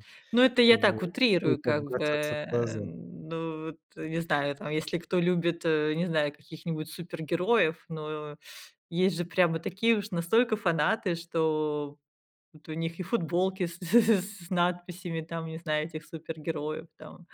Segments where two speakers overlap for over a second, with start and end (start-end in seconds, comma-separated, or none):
0.7-2.8